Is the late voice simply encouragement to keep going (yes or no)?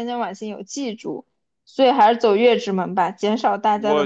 no